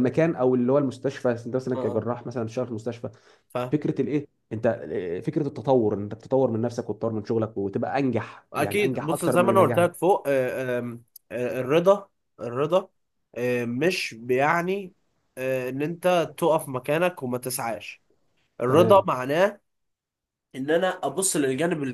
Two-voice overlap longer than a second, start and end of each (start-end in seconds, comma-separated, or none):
8.5-9.9